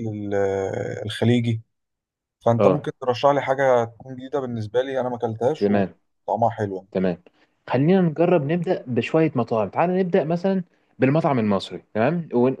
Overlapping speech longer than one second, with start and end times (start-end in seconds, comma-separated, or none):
none